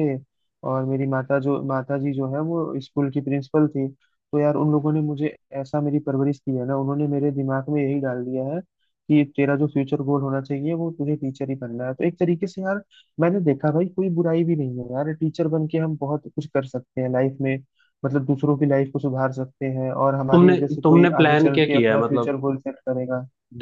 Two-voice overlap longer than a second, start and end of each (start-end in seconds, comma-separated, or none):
20.3-22.3